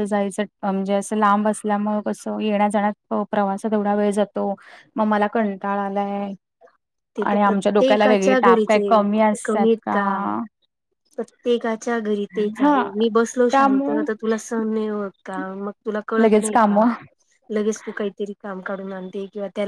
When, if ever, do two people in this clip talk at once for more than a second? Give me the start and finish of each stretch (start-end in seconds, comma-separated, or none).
7.3-9.4